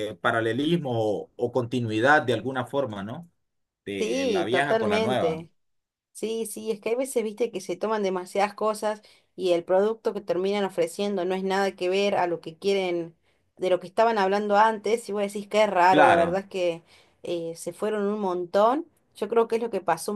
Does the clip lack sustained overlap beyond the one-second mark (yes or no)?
no